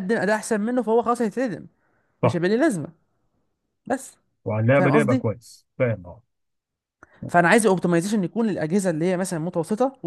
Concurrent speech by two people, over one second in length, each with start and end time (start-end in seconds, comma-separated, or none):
none